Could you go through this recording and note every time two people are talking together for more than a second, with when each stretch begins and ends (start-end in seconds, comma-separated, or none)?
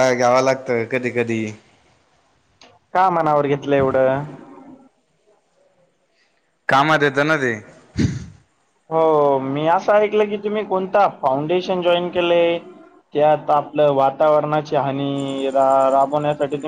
none